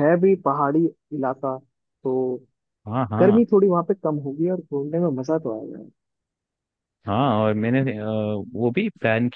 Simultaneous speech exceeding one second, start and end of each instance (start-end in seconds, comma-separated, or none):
none